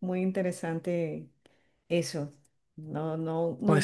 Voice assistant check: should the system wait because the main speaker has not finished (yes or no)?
yes